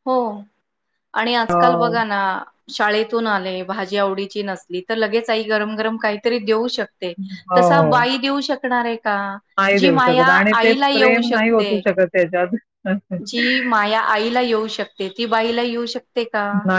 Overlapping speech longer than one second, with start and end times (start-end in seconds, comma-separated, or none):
9.8-11.7